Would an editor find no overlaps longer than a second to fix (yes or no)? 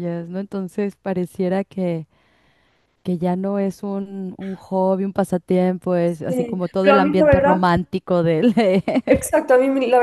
no